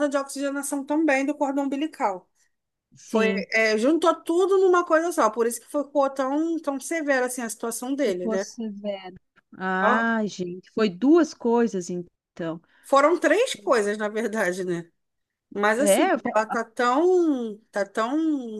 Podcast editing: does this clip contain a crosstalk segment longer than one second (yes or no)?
no